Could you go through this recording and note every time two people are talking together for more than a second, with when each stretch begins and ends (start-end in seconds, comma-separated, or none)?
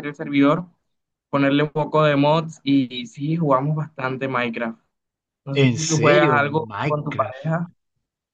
5.5-7.5